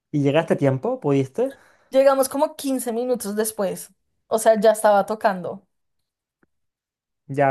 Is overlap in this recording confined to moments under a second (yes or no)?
yes